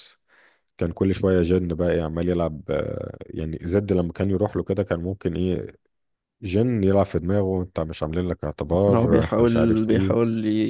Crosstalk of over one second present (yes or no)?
yes